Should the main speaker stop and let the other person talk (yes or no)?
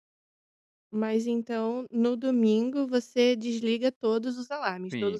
yes